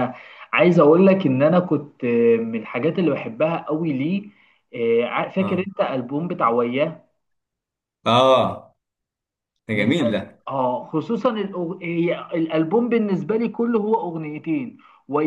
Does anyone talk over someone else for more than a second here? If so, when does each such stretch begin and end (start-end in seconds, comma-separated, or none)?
none